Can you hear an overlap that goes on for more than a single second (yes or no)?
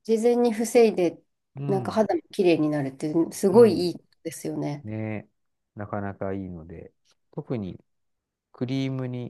no